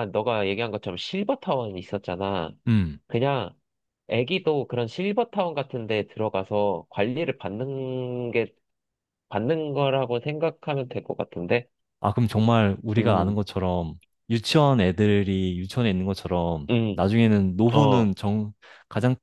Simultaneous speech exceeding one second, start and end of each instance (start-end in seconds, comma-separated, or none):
none